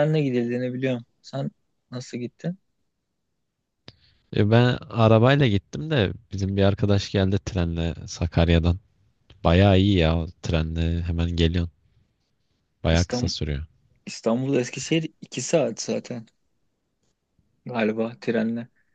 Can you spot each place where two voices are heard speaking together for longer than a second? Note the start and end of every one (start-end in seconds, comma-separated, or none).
none